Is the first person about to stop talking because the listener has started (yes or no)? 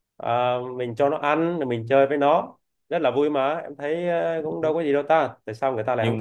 yes